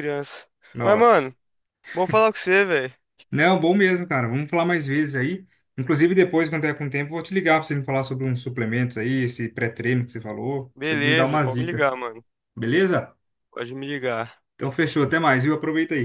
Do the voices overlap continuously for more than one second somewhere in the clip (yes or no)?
yes